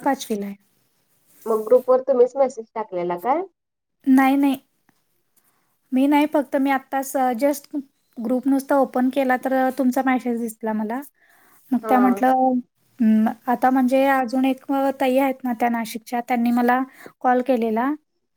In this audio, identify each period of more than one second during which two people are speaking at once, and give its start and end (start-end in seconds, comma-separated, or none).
none